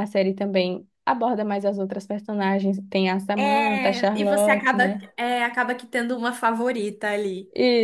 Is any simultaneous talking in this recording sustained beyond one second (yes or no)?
yes